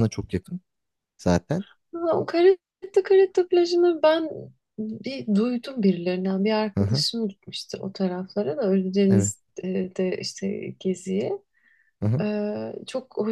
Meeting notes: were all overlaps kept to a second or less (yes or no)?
yes